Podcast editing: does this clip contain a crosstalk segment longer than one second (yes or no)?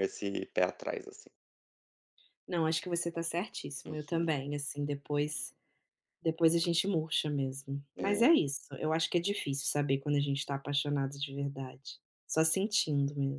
no